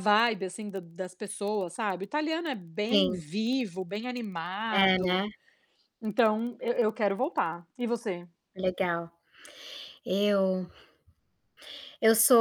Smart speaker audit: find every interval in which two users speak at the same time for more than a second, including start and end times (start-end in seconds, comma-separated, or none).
none